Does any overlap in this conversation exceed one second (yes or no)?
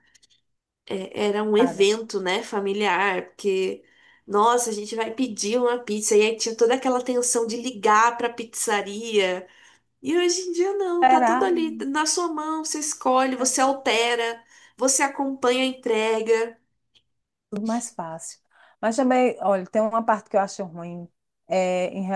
no